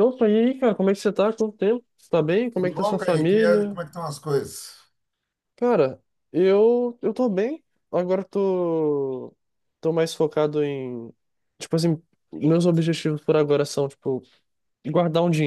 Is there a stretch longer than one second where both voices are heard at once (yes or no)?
yes